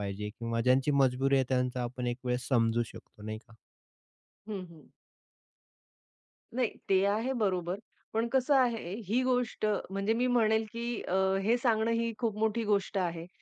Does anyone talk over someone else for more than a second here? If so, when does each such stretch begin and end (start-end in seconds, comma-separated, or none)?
none